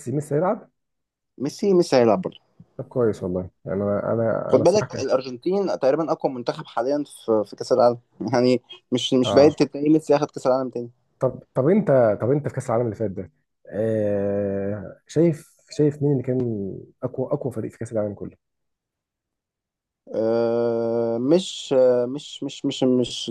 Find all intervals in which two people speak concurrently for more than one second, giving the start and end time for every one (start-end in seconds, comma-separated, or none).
none